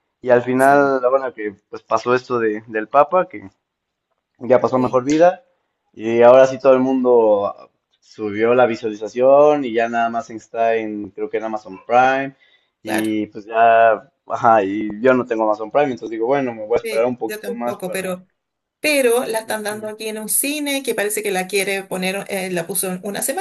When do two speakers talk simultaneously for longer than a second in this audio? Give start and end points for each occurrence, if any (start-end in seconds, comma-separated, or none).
16.8-18.2